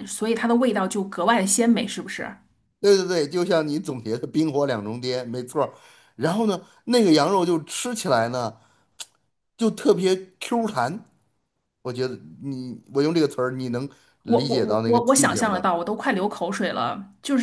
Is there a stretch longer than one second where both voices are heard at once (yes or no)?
yes